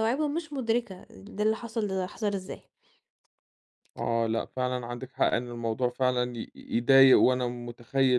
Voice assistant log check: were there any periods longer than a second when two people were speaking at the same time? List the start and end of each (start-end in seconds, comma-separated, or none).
none